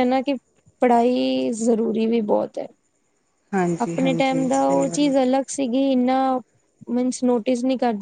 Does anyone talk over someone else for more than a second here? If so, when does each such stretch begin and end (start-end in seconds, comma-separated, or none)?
3.8-5.1